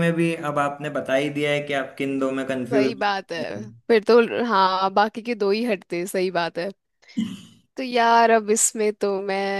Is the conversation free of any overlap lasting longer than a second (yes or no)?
yes